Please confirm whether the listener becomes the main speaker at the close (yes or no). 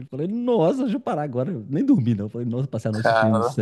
no